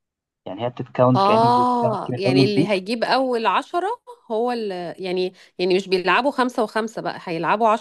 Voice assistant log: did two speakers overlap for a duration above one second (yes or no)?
yes